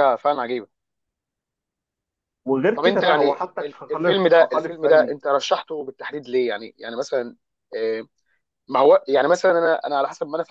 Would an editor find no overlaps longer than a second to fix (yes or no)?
no